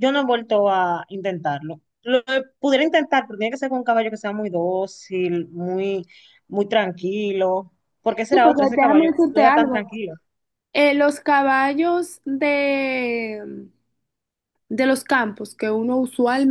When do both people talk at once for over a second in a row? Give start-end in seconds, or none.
8.3-9.9